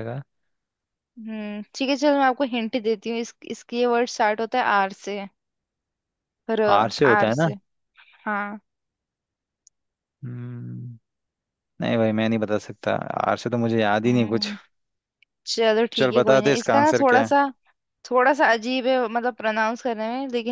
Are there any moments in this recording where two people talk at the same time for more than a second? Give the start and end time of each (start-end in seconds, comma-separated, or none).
16.0-17.4